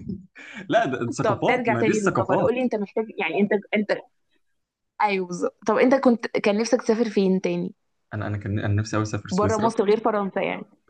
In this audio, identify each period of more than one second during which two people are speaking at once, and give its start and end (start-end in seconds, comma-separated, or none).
1.2-2.6